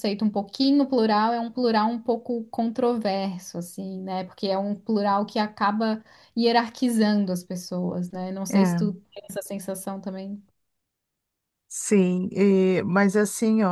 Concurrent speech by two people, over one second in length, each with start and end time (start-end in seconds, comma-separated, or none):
none